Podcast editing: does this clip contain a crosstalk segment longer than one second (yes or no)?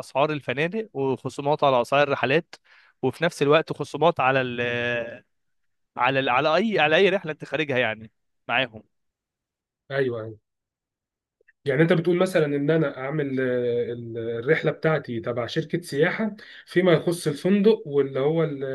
no